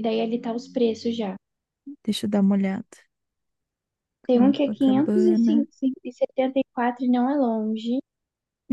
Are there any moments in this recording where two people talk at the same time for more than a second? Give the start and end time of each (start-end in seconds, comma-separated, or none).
4.3-5.5